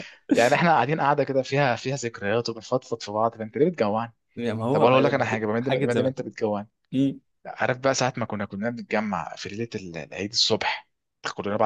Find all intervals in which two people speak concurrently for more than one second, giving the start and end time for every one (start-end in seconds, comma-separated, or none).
4.7-6.1